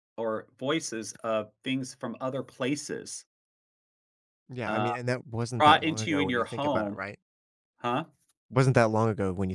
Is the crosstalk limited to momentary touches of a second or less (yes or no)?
no